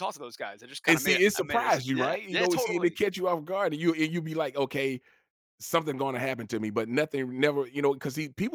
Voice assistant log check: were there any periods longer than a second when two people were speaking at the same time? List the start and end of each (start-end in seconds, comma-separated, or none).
0.9-3.0